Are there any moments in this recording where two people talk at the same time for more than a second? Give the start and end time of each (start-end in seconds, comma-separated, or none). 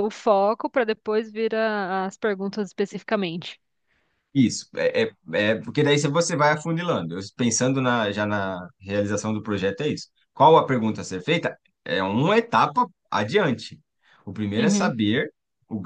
none